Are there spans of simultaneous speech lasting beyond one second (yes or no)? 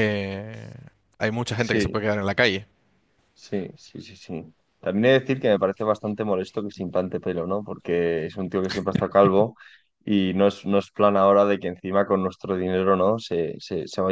no